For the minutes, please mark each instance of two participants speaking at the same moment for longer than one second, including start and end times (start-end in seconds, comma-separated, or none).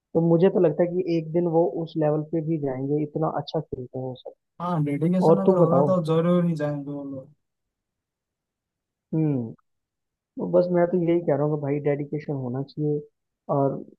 none